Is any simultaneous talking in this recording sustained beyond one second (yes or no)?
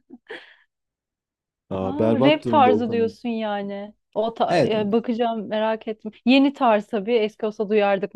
yes